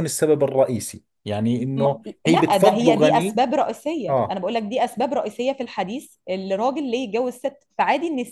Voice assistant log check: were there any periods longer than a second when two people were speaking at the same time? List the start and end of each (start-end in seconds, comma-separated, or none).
1.8-3.4